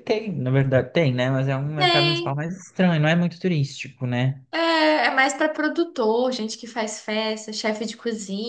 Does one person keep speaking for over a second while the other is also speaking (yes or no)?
no